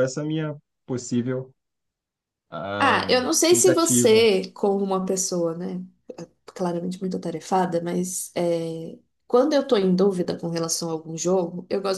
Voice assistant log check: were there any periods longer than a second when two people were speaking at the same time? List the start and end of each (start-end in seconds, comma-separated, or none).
2.8-4.2